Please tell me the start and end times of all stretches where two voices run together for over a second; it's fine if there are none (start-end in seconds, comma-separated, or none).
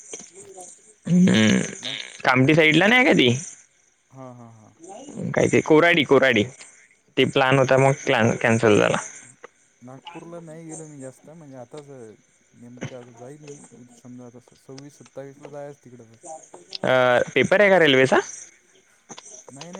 none